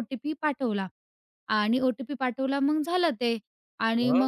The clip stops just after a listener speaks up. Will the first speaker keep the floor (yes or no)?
yes